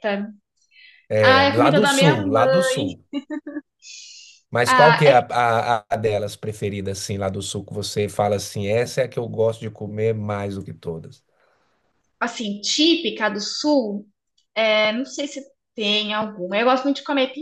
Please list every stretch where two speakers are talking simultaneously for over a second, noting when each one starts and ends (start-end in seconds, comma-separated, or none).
1.2-2.7